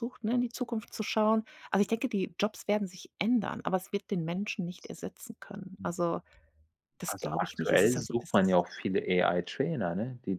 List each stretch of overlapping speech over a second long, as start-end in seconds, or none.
7.1-8.3